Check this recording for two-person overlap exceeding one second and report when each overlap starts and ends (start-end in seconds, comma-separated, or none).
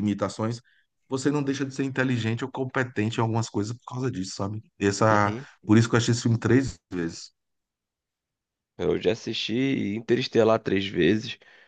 none